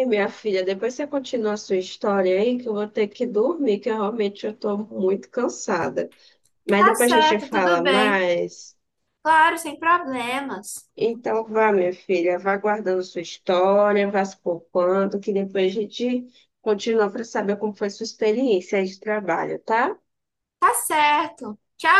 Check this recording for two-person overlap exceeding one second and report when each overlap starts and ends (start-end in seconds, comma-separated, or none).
6.8-8.2